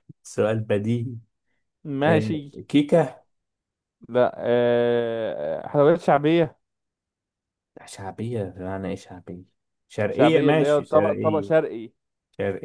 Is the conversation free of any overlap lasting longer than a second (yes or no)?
no